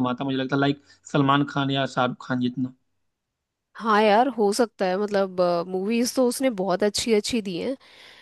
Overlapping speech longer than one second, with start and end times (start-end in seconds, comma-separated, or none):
none